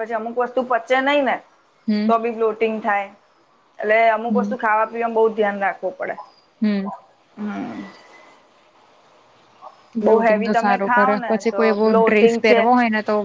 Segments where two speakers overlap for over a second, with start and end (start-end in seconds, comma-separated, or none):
10.1-12.6